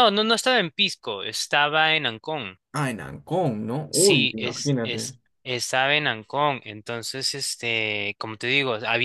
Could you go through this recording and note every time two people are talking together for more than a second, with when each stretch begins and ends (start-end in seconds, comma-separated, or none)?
3.9-5.1